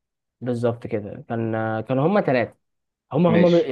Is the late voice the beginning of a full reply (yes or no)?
no